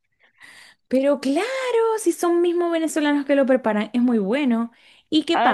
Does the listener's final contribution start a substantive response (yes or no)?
yes